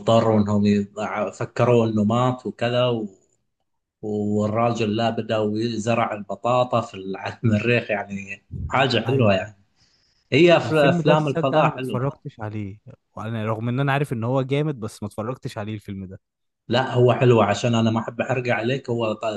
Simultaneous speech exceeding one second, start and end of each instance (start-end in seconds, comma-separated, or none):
10.6-12.1